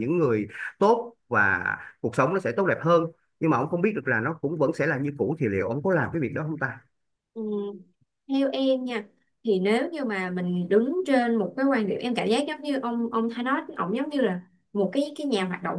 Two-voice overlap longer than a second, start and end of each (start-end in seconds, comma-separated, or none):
none